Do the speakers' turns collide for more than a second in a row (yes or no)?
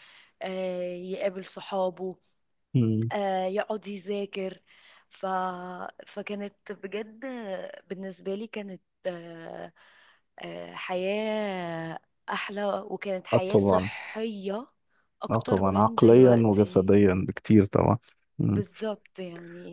yes